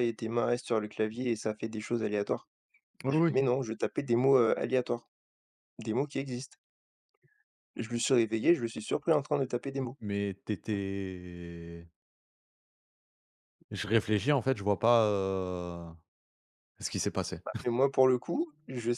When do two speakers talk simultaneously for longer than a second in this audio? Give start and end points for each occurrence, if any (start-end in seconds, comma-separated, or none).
none